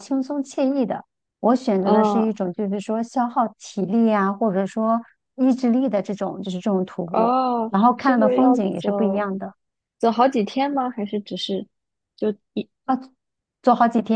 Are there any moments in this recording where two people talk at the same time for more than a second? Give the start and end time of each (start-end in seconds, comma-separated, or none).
7.1-9.3